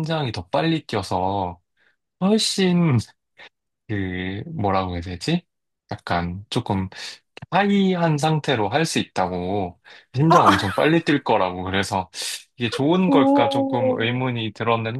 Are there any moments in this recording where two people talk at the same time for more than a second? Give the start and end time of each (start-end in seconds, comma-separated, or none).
13.1-14.3